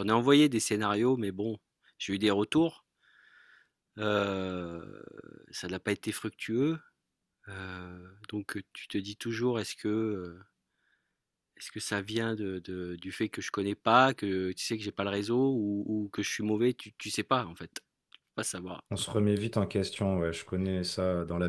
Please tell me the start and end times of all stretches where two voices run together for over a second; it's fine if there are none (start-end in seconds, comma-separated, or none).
none